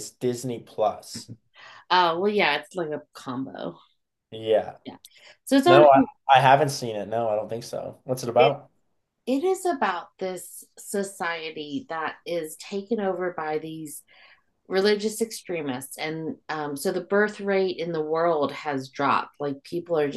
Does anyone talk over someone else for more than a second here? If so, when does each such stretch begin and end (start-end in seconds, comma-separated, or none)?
none